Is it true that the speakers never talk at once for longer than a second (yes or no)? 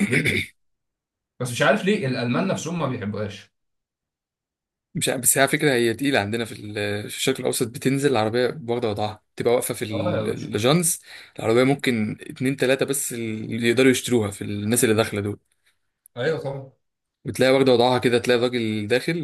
yes